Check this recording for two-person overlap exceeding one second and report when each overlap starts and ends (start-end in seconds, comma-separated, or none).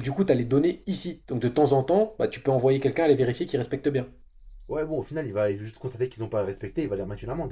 none